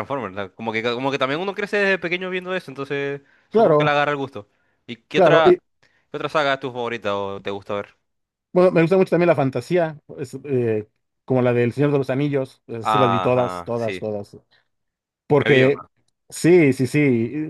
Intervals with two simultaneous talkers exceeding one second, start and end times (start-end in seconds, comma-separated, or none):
12.8-14.1